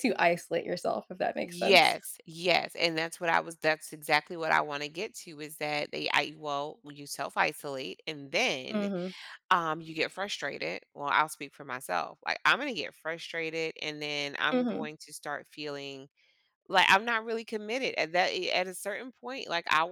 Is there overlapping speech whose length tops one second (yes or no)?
no